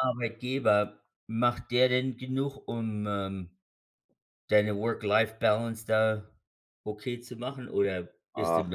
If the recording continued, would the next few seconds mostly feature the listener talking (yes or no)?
yes